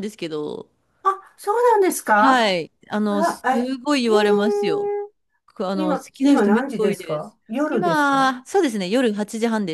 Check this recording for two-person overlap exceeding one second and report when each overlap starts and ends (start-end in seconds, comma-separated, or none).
5.7-8.4